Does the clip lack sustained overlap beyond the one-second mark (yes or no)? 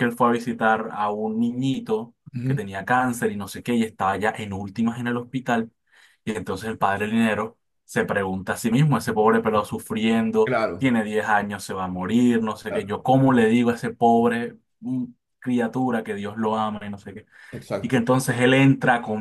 yes